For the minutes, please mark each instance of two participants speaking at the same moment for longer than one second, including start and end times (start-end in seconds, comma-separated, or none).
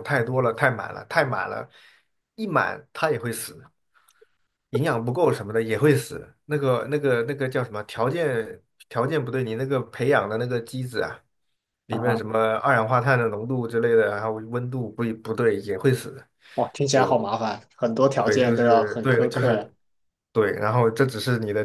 18.2-19.7